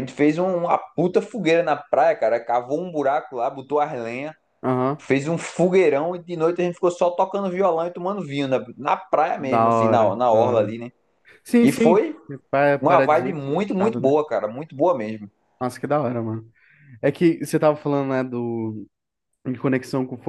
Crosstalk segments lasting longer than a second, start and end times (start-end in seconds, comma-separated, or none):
9.4-10.7, 12.8-14.2